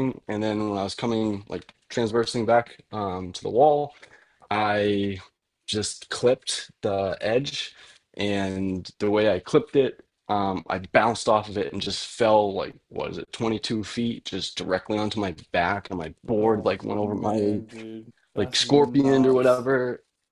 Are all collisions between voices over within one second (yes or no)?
no